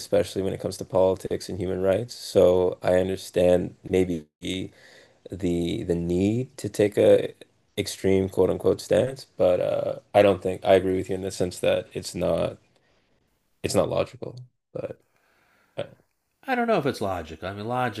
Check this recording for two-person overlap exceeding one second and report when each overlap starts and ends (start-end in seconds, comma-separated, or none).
none